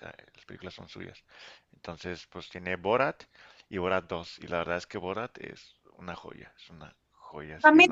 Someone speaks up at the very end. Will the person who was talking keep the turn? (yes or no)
no